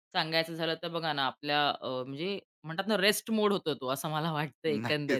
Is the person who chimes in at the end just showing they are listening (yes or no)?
no